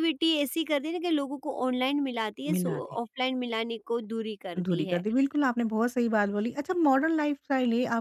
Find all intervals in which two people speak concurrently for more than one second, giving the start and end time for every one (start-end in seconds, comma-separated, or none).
none